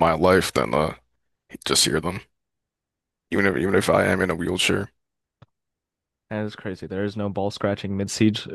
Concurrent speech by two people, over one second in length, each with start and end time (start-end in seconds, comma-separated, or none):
none